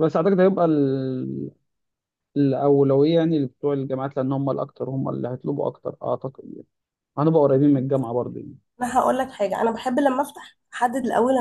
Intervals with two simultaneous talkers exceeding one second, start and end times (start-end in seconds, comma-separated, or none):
none